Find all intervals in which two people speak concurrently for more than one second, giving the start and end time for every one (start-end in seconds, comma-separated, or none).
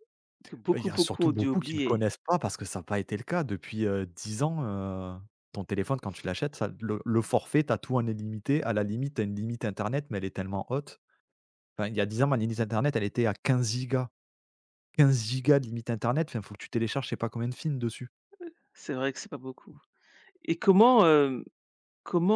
0.7-2.0